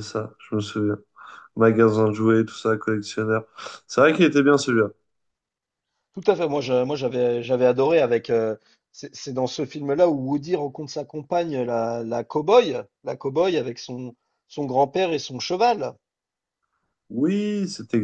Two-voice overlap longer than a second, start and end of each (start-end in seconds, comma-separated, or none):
none